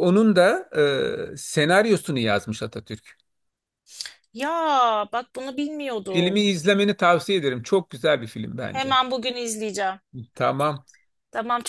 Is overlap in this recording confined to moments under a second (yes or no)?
yes